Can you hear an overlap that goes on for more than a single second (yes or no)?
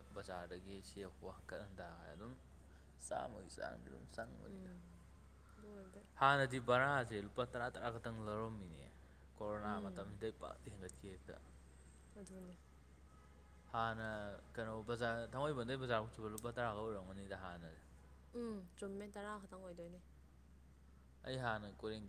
no